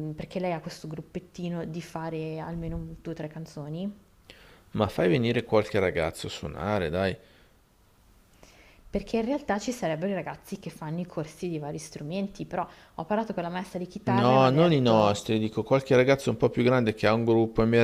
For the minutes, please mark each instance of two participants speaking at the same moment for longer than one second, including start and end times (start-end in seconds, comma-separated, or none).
14.0-15.3